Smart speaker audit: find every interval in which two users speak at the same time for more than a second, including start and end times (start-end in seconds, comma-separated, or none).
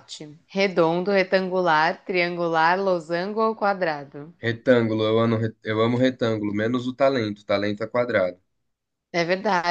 none